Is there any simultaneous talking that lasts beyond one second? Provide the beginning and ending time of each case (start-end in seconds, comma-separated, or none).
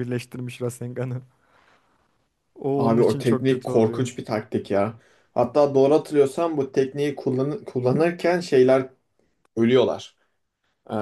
2.8-4.1